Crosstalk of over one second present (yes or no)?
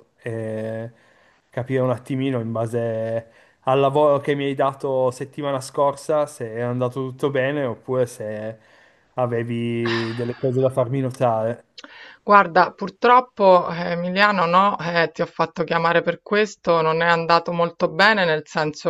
no